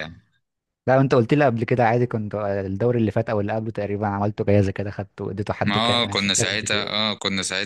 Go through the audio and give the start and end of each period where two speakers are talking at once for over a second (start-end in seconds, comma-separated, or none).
5.7-7.0